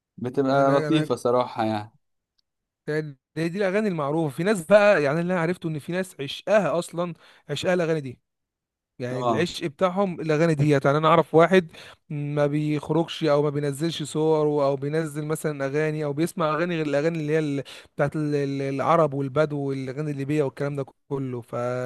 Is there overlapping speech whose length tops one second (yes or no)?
no